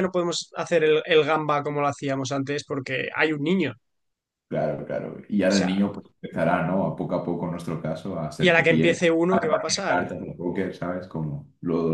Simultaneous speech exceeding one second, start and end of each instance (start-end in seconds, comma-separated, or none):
8.4-10.0